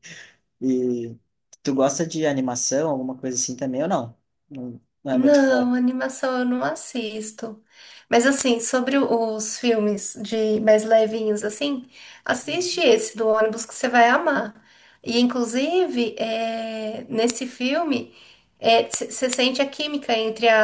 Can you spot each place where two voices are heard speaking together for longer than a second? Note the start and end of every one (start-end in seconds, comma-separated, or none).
none